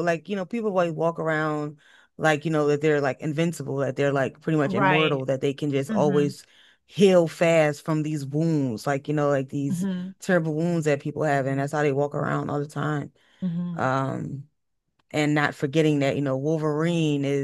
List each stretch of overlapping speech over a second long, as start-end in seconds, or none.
none